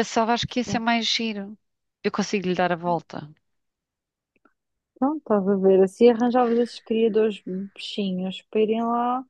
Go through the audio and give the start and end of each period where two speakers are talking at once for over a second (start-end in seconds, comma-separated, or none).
none